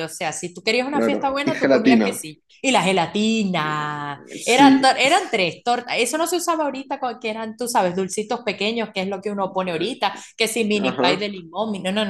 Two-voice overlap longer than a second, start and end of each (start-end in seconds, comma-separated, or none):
0.9-2.2